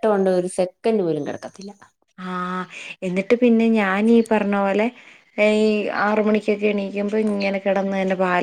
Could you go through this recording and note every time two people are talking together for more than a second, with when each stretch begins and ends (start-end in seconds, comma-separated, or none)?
none